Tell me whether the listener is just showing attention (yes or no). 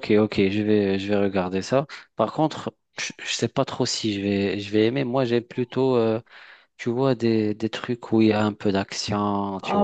no